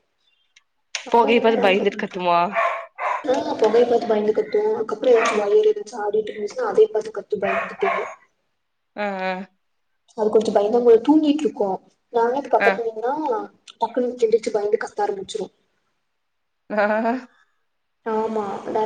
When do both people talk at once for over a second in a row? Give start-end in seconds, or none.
1.1-2.3